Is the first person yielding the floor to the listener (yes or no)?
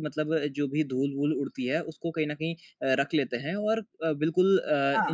no